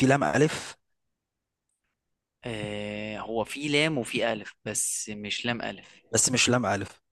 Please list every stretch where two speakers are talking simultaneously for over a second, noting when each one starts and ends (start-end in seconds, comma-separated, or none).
none